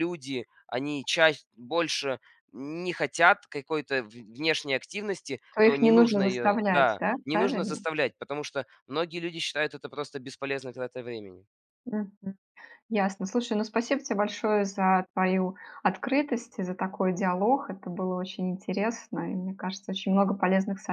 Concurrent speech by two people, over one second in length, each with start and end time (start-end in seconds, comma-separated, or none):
5.5-7.8